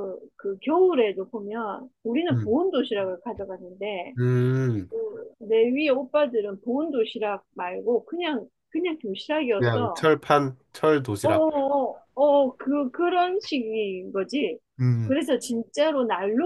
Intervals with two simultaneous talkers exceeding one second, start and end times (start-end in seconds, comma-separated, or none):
none